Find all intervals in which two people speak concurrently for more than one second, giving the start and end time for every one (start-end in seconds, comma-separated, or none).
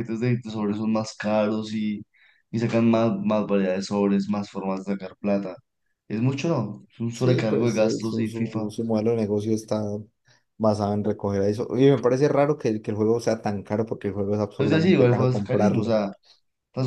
7.1-8.7, 14.6-16.0